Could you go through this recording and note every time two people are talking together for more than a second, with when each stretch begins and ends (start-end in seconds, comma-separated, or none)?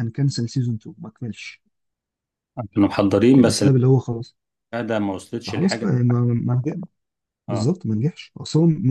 none